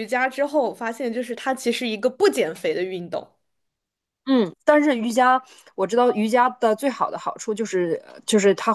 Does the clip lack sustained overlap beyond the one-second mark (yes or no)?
yes